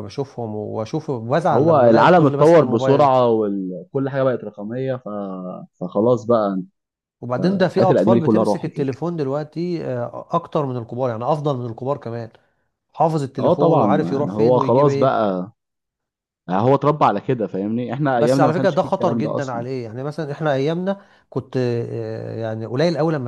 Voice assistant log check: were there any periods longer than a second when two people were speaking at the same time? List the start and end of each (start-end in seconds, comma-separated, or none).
1.5-3.1, 7.7-8.9, 13.4-15.2, 18.2-19.7